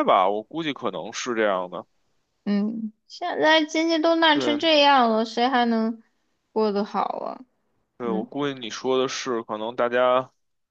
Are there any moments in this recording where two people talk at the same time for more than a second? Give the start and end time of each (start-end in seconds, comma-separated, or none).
none